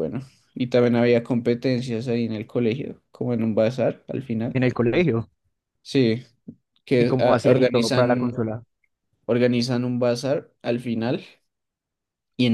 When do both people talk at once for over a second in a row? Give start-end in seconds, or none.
7.0-8.5